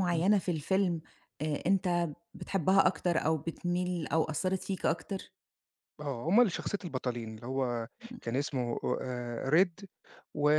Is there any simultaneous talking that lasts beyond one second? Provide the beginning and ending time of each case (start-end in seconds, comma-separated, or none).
none